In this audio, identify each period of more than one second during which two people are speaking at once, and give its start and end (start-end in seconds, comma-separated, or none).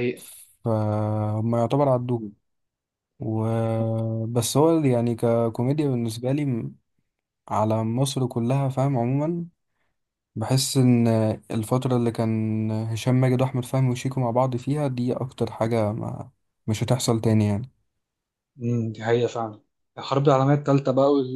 none